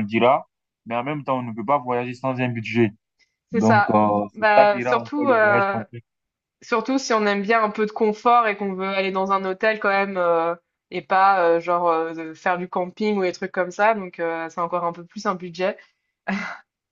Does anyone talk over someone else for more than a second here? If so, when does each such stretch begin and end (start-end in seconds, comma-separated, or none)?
3.5-5.8